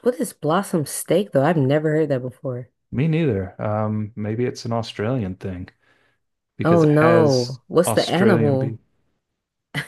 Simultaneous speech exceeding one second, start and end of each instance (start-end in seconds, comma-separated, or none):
6.6-8.8